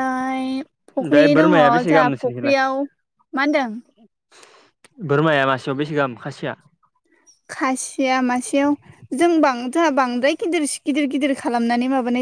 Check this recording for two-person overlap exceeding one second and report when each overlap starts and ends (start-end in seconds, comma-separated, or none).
1.0-2.6